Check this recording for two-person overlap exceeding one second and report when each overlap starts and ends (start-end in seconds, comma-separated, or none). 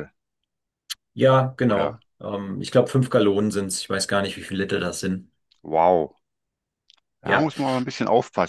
none